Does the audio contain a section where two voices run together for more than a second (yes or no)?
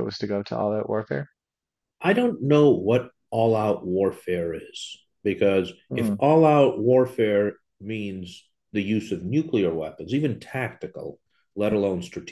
no